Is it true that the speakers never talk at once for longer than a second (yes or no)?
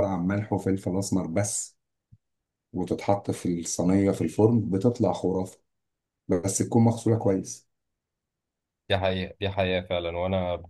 yes